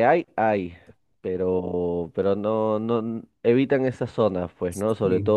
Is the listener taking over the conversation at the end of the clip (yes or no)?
no